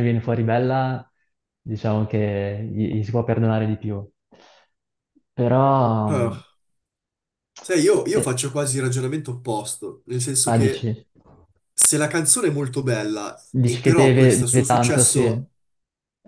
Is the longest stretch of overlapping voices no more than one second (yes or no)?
no